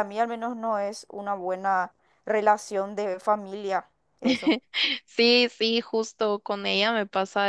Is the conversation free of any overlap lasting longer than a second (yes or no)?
yes